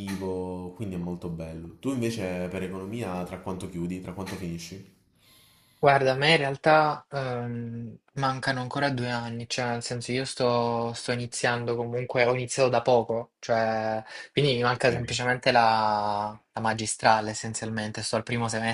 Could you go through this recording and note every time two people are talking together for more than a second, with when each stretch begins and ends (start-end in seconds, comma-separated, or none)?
none